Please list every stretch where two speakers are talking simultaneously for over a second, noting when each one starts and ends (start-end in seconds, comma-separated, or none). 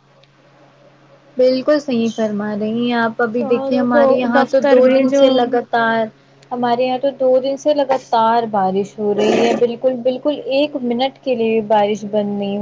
3.4-5.5